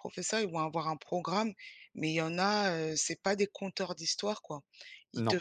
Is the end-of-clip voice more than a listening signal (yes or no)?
no